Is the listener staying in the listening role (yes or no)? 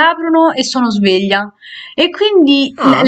yes